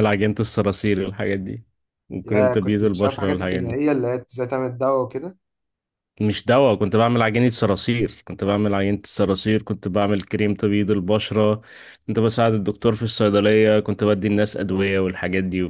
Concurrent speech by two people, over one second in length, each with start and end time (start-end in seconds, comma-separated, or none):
2.2-3.8